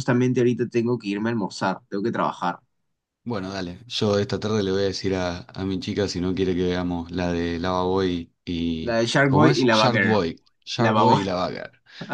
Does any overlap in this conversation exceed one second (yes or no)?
yes